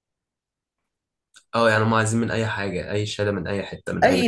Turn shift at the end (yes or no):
yes